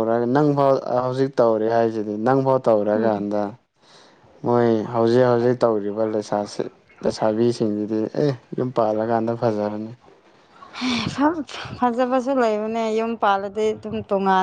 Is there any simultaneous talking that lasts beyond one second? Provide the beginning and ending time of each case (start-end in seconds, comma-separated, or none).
none